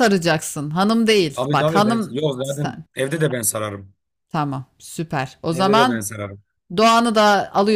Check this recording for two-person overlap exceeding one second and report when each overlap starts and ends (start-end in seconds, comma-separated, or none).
1.3-2.9